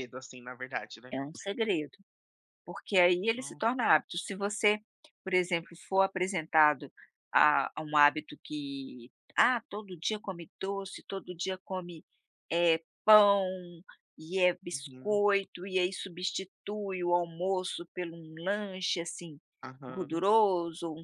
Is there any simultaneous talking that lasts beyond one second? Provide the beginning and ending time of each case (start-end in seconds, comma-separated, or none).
none